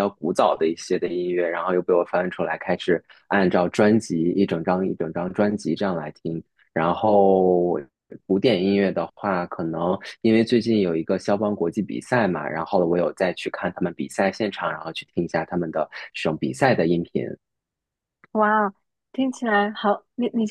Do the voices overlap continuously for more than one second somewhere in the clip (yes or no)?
no